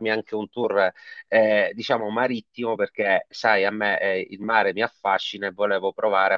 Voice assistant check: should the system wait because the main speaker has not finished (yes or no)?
yes